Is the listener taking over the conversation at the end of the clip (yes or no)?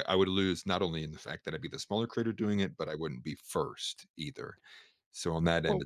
no